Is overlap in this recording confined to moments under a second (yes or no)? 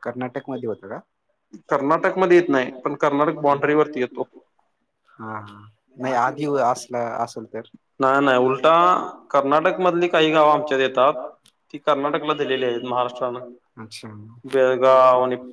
no